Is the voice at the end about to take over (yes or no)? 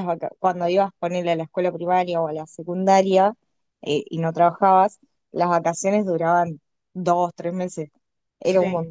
no